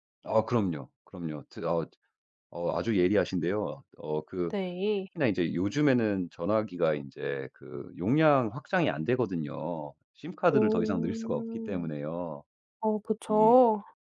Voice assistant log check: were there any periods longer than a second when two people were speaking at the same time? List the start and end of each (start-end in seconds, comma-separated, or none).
10.5-11.9